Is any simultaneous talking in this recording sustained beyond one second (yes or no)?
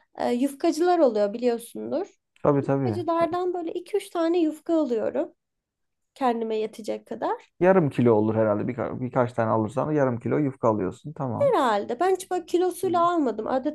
no